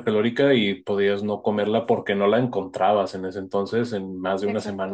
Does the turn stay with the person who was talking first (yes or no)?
yes